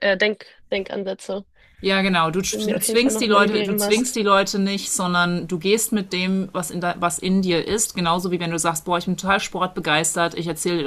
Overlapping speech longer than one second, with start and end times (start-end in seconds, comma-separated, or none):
2.5-4.2